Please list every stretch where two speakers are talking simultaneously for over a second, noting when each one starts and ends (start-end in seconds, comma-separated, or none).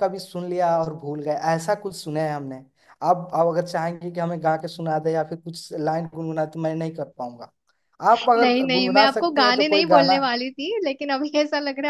8.4-10.2